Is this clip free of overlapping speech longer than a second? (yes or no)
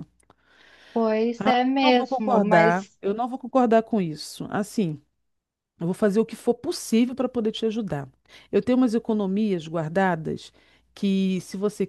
no